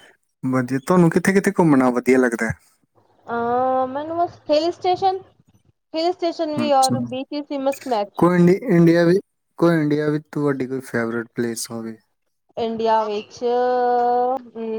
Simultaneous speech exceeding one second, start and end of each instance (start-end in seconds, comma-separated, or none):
none